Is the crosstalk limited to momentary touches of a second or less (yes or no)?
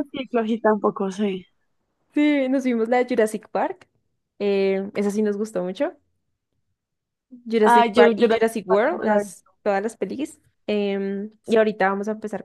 no